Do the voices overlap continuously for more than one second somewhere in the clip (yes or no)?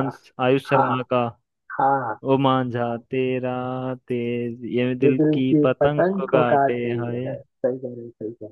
yes